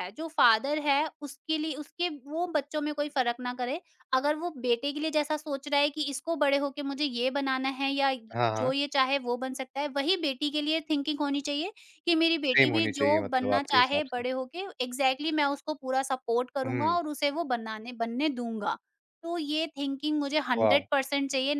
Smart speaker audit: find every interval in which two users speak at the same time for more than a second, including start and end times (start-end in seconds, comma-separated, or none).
12.5-14.2